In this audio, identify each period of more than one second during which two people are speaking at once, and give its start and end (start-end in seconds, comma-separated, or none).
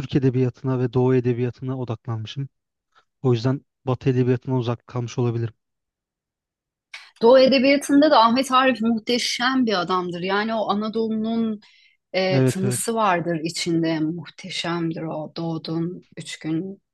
none